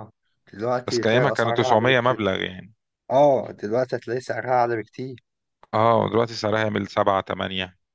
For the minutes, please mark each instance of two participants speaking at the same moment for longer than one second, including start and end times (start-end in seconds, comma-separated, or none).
0.9-2.2